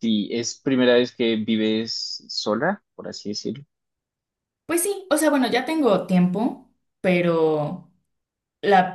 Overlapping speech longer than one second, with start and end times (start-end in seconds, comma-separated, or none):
none